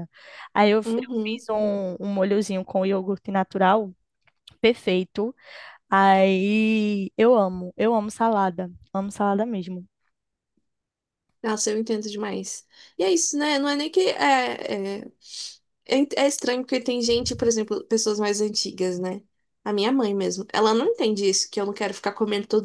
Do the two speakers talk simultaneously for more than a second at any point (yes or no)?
no